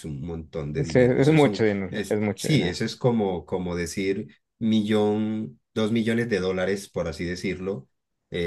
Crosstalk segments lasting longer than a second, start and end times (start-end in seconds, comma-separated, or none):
0.8-2.8